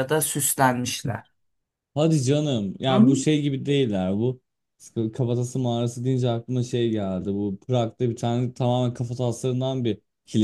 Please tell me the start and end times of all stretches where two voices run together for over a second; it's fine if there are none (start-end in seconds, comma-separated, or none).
none